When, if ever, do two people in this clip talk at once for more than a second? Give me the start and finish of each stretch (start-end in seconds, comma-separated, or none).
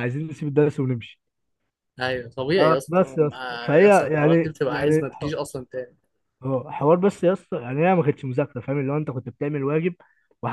2.9-5.3